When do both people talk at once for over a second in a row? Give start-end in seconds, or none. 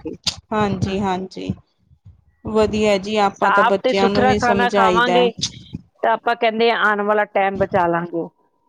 3.4-5.2